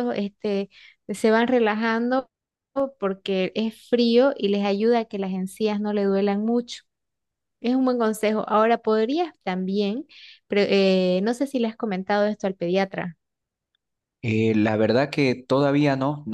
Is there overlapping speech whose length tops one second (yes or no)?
no